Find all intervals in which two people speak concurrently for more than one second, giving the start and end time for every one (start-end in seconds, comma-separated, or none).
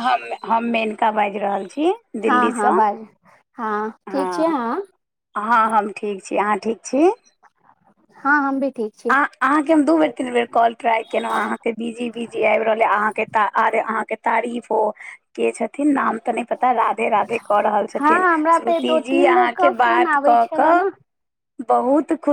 18.0-20.8